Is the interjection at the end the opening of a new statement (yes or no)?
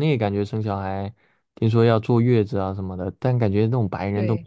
no